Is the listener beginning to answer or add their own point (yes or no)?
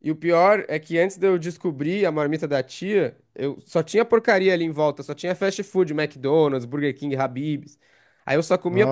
no